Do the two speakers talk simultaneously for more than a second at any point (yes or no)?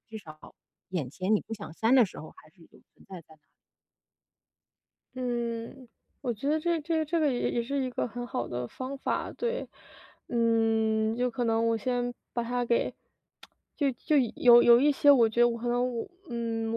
no